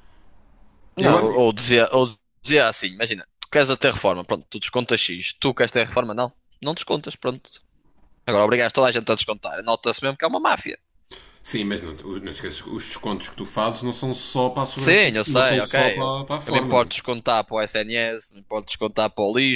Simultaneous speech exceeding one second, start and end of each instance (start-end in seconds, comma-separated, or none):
14.8-16.9